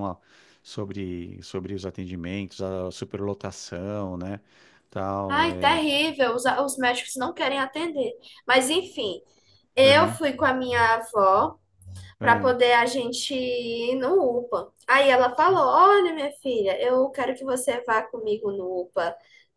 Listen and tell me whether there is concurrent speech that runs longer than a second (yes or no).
no